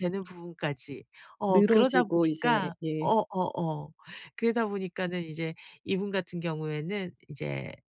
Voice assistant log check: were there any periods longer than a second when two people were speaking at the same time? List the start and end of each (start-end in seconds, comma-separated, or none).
1.5-3.1